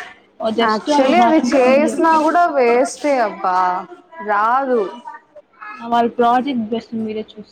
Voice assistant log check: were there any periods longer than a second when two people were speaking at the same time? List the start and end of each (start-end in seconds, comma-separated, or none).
0.7-2.4